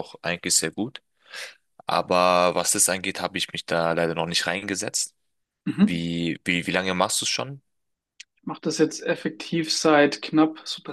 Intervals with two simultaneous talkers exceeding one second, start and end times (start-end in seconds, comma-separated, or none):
none